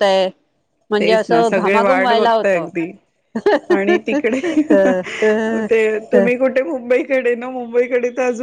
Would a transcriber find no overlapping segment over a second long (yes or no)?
no